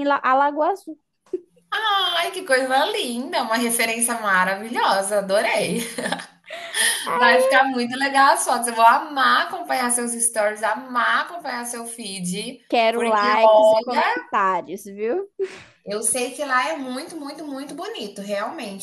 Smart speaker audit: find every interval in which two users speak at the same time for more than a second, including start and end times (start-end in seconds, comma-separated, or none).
12.7-14.2